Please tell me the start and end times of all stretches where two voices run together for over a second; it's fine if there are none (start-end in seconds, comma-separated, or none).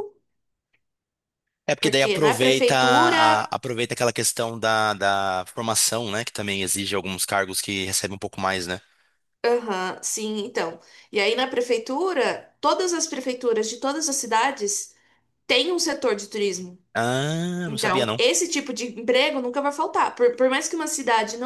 1.8-3.2